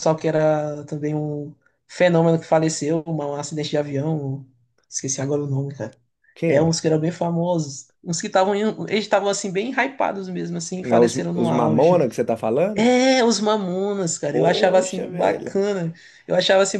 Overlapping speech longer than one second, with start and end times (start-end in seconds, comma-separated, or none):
10.8-12.1, 14.3-15.6